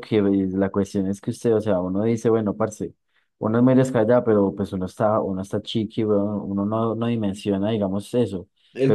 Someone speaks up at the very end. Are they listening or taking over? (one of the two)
listening